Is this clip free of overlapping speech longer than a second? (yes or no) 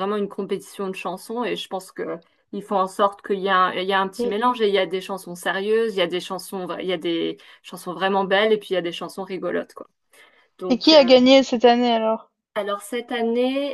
yes